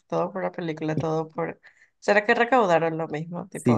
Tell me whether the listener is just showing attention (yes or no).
no